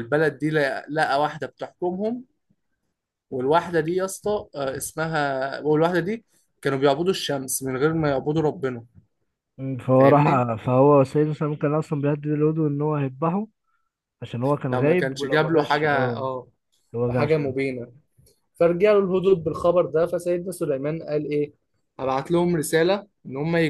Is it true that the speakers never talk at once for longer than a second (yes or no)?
no